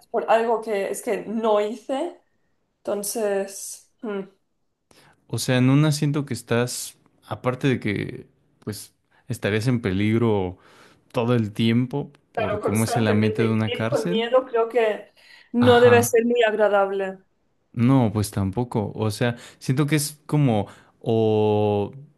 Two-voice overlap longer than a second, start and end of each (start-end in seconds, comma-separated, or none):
12.3-14.3